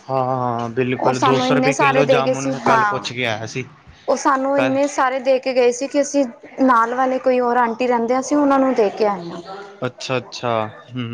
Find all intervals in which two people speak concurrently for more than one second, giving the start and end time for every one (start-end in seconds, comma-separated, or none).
1.0-3.1